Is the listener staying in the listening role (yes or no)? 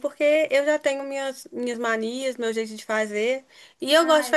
yes